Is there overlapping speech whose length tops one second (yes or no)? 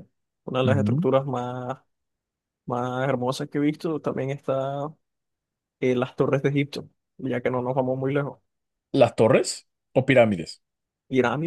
no